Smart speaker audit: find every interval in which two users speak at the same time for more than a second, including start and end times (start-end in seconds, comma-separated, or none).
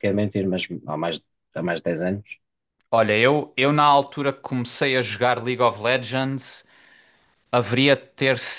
none